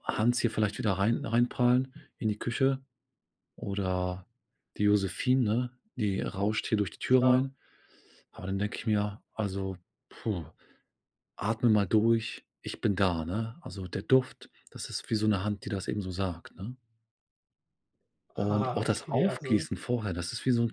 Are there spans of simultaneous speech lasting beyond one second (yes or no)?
yes